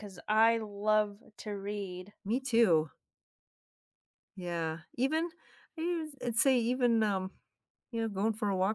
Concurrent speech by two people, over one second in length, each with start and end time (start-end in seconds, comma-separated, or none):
none